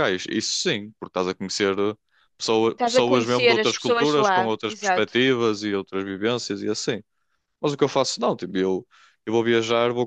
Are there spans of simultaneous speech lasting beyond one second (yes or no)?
yes